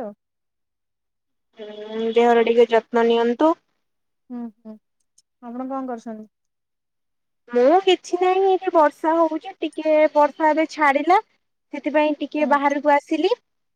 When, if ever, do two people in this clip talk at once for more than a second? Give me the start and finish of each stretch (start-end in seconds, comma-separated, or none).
none